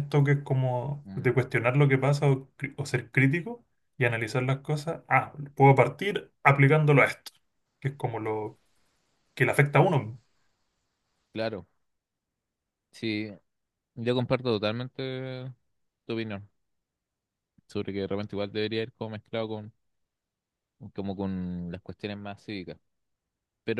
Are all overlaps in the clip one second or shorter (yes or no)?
yes